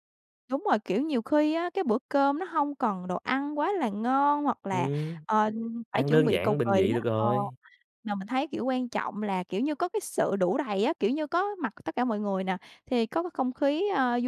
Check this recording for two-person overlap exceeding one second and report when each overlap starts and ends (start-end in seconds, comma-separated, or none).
5.9-7.3